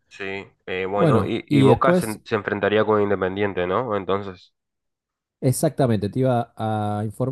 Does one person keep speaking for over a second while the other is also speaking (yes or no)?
yes